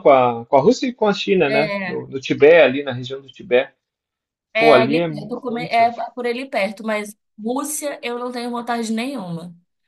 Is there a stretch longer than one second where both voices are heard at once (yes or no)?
yes